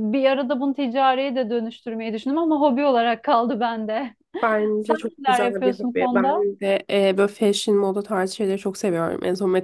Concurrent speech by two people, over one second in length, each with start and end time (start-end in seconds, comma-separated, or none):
4.8-6.5